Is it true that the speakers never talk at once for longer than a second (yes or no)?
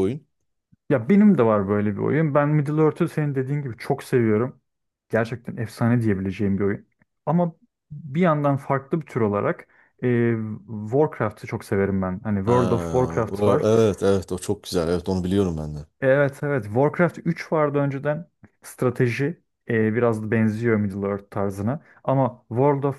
no